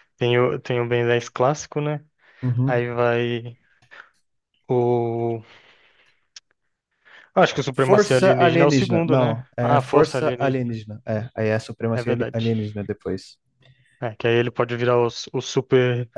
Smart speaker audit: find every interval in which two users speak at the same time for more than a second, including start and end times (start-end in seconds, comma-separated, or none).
7.7-10.8